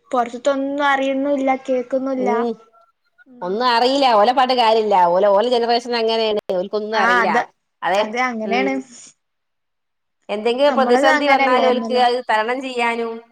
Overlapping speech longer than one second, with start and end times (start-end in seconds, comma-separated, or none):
10.7-12.0